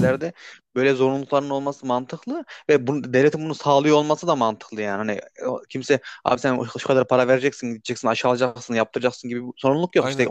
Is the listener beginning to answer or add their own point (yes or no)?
no